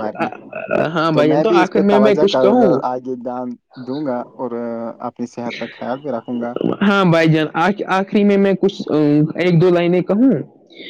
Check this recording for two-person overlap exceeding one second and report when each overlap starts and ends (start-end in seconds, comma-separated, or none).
1.1-2.7